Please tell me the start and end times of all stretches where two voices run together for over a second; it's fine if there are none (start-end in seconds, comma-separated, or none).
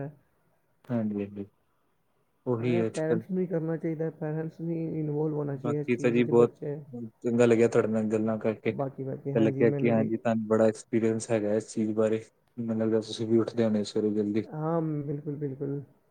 none